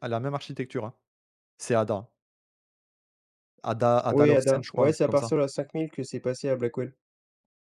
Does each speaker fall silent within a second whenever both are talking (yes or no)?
no